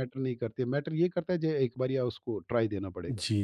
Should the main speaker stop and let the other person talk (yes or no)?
yes